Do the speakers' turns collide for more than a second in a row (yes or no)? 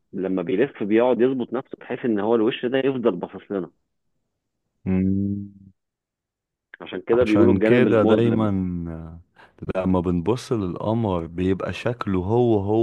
yes